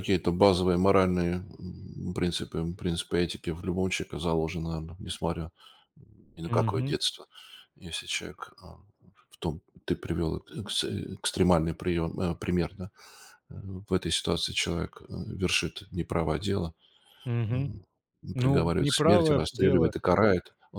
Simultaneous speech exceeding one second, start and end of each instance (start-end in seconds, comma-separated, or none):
18.4-19.9